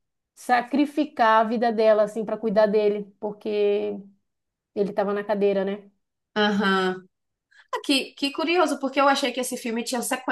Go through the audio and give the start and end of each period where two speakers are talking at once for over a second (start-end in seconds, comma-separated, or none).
none